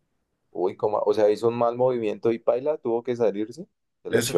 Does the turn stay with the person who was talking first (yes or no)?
no